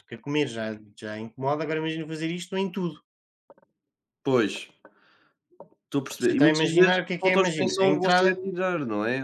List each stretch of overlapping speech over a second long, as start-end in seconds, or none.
6.1-8.3